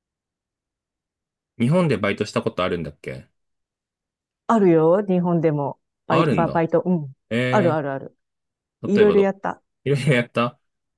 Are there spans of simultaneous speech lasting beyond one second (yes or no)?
no